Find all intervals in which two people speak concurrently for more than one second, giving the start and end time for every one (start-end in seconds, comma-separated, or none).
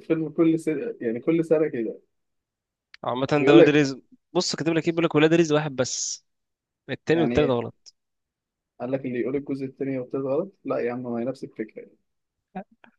none